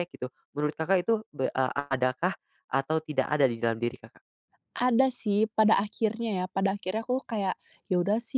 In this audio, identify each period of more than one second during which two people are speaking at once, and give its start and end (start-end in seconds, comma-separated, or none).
none